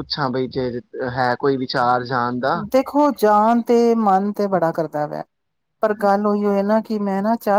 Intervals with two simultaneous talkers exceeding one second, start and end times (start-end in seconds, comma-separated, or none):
none